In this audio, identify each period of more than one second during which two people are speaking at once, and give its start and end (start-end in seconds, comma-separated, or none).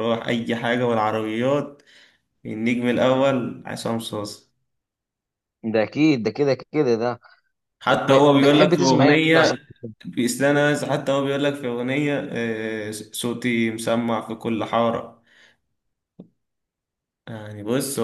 7.9-9.6